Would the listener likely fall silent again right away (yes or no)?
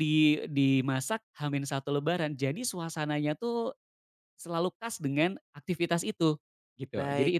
no